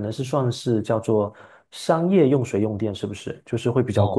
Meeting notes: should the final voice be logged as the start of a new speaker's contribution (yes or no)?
yes